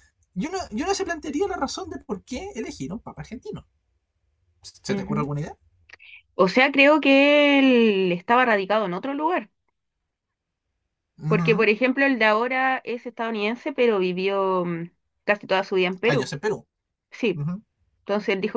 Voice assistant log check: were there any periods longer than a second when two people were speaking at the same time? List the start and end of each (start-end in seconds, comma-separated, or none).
none